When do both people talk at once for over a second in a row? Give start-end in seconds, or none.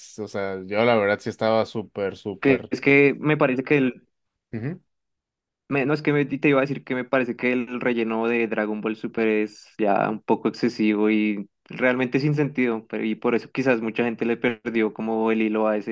none